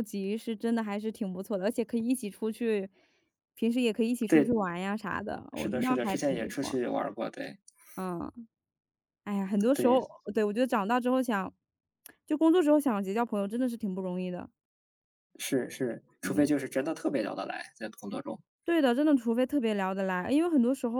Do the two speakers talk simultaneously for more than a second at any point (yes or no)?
yes